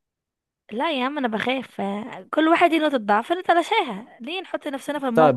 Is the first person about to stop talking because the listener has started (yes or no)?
yes